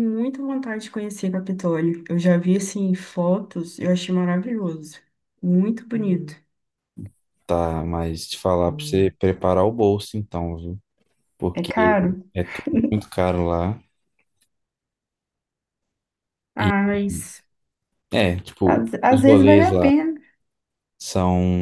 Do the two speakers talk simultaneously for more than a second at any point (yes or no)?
yes